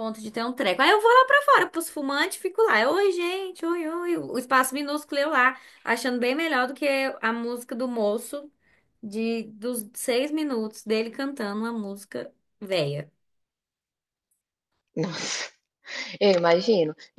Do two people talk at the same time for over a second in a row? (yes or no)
no